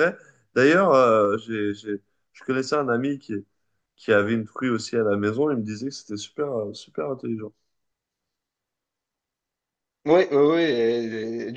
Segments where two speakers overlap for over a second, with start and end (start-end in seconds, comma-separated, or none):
none